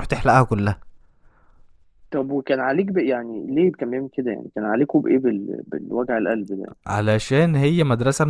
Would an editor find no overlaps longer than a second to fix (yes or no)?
yes